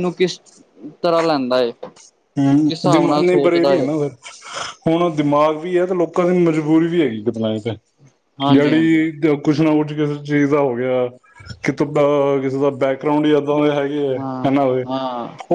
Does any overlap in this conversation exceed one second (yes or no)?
yes